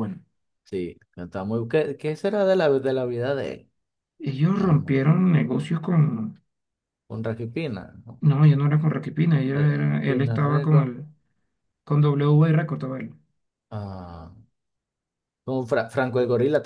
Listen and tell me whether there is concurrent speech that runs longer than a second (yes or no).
yes